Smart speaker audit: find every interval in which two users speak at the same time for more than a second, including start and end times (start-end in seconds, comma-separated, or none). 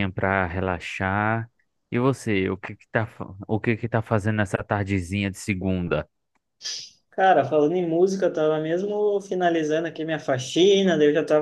none